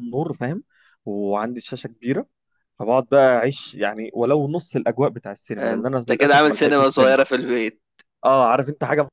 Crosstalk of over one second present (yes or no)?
yes